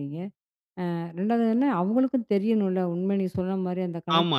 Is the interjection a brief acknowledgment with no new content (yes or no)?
no